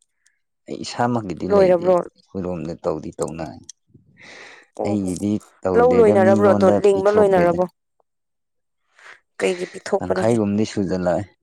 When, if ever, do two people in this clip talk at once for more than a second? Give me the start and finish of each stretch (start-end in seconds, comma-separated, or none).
5.8-7.6